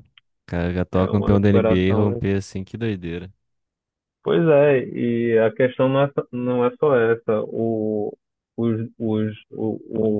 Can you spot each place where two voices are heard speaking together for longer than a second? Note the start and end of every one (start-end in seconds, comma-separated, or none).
0.9-2.2